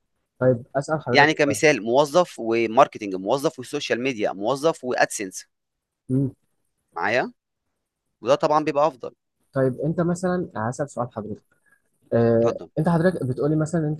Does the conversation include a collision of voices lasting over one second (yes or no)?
no